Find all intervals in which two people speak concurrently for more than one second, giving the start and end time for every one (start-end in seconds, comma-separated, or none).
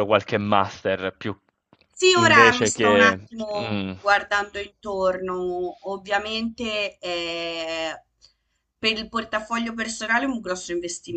2.1-3.9